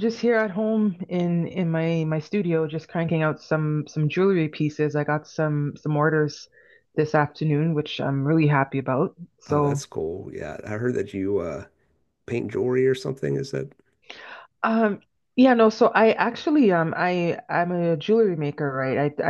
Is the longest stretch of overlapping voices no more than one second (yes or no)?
yes